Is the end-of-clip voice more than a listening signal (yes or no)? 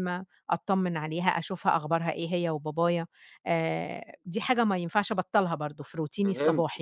yes